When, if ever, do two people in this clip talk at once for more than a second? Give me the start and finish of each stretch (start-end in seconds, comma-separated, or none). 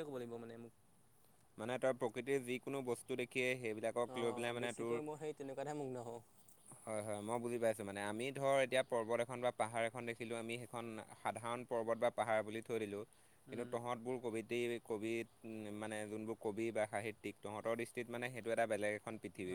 none